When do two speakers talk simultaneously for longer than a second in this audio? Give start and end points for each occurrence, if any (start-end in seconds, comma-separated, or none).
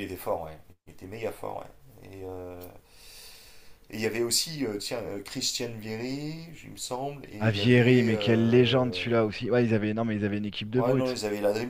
7.4-9.0